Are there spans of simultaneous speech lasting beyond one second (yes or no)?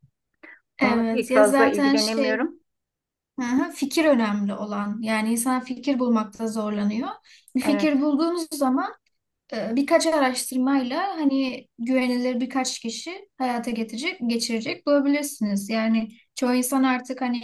yes